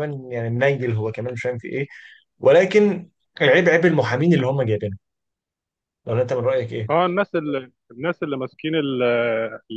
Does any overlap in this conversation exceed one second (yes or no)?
no